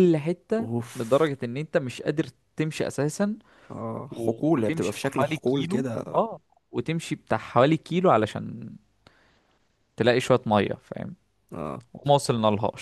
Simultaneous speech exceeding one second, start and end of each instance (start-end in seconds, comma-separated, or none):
4.1-6.2